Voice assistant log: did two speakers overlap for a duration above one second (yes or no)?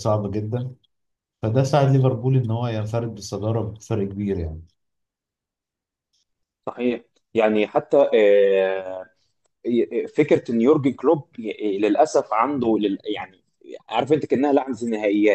no